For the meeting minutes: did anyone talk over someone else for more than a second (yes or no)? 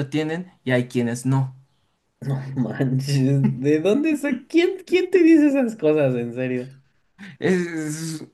no